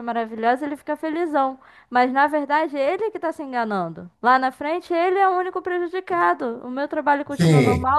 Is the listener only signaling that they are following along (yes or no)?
yes